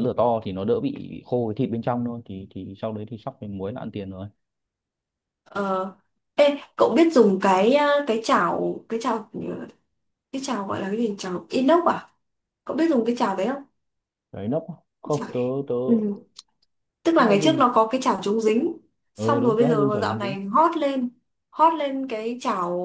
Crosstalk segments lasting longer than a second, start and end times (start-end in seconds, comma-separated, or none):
19.1-20.4